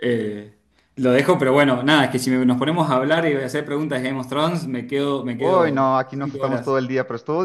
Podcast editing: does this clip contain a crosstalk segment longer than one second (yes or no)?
yes